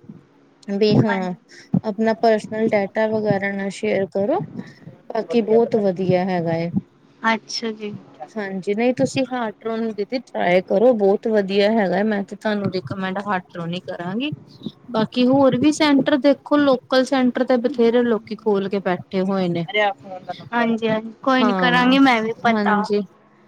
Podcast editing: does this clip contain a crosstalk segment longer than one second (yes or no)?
no